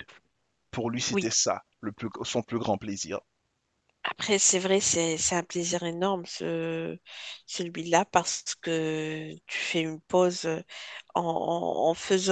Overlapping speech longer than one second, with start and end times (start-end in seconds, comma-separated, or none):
none